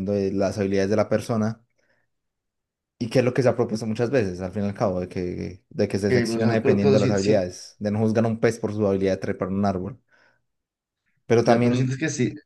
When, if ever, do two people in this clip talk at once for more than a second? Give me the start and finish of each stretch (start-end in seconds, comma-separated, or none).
6.1-7.4